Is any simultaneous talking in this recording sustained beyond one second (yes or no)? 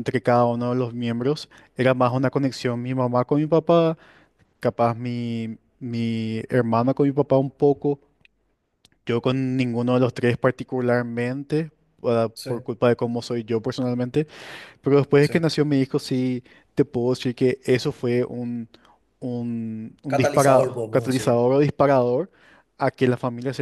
yes